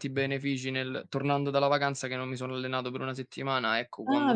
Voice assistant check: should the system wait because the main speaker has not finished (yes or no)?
no